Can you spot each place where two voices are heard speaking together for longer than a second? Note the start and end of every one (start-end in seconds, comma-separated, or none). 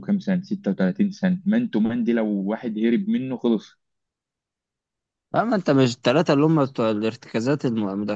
none